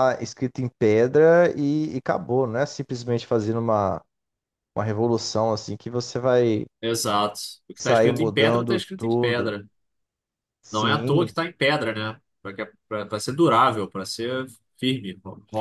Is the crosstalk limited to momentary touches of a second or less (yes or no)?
no